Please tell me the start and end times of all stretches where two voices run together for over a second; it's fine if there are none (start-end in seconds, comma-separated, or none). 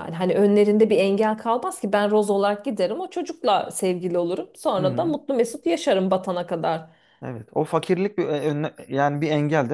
none